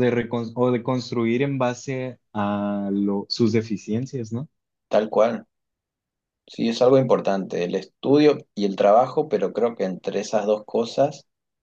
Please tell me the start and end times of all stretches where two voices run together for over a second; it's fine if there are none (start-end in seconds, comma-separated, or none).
none